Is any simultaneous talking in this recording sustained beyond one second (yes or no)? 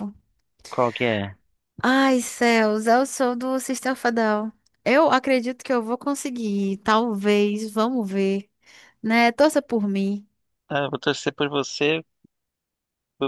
no